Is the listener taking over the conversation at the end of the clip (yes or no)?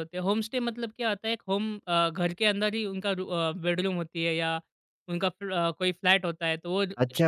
yes